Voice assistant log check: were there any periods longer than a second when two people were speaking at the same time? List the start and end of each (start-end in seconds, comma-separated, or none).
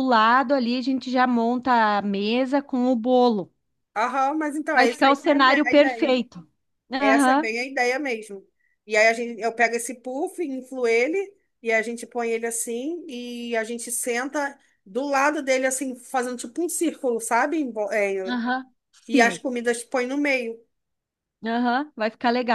4.8-6.2